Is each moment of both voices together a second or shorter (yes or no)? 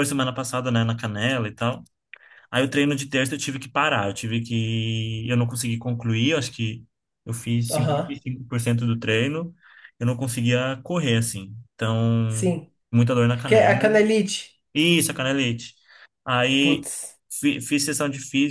yes